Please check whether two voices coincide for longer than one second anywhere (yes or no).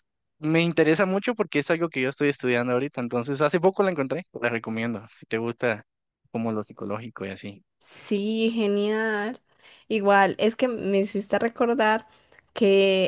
no